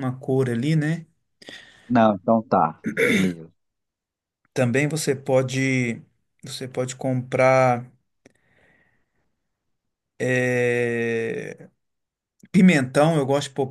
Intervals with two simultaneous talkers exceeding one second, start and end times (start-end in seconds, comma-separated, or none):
none